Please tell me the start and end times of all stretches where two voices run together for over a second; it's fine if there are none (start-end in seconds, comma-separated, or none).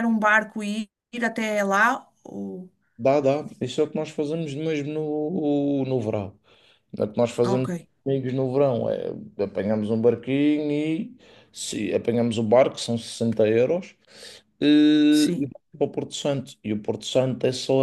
none